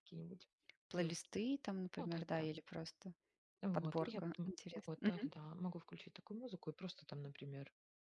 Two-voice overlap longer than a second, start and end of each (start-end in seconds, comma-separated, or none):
3.7-5.3